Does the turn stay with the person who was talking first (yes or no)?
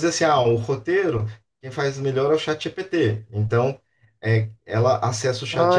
no